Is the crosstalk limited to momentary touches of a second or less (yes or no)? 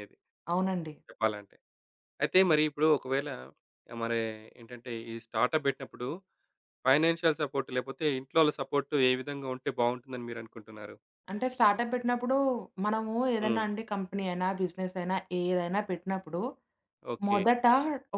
yes